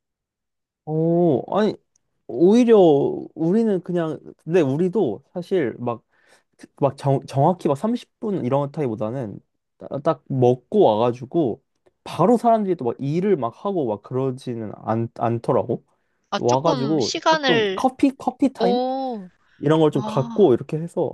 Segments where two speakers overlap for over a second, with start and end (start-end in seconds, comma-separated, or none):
16.3-17.9